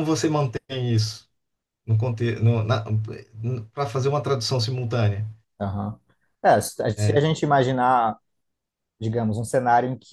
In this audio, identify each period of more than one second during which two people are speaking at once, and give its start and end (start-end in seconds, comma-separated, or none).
none